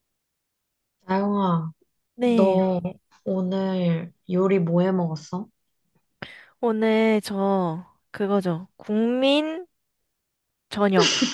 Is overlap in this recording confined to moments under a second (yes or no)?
yes